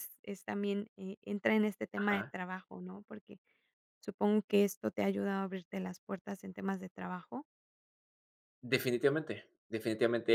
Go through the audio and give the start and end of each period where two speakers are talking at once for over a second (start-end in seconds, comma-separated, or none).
none